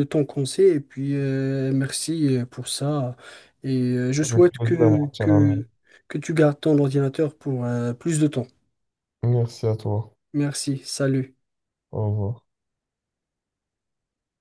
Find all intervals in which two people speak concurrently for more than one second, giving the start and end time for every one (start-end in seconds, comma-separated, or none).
4.2-5.7